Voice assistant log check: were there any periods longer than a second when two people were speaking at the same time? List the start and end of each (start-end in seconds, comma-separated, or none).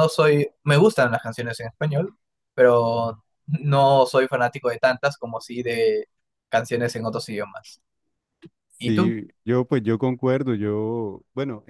none